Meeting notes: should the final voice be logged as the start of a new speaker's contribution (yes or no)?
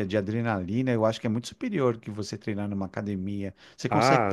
yes